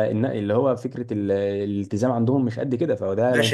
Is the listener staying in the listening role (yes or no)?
no